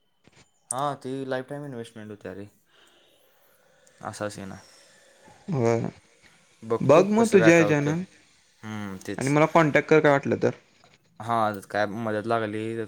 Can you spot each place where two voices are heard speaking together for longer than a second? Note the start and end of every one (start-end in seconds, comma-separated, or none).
6.9-9.3